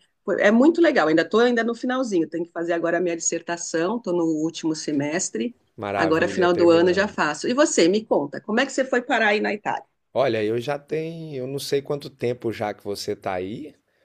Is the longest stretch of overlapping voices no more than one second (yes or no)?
no